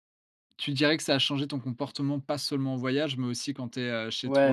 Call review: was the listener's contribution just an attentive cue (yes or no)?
no